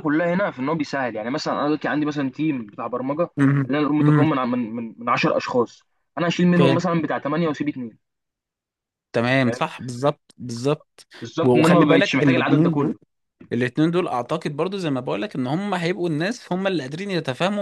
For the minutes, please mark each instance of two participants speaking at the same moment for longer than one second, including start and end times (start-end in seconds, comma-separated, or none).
11.4-12.9